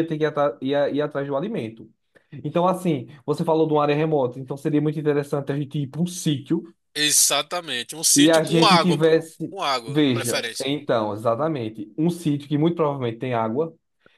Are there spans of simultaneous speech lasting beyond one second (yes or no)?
yes